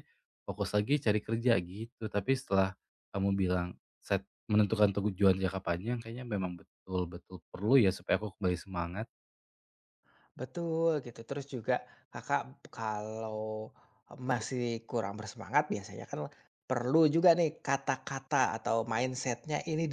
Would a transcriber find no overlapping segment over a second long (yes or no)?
yes